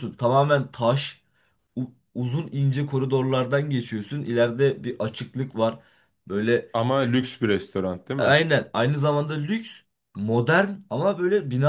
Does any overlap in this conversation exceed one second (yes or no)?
no